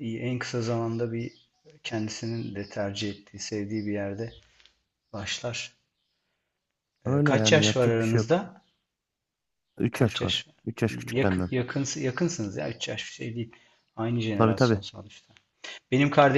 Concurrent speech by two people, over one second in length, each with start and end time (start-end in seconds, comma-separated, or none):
7.1-8.4, 9.9-11.5